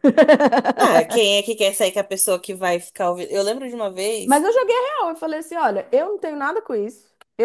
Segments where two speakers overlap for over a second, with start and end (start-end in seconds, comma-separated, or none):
none